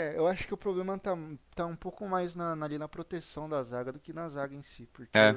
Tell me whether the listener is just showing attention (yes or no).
yes